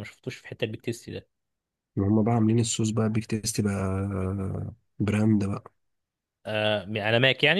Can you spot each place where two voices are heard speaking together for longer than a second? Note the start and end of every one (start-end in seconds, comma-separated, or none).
none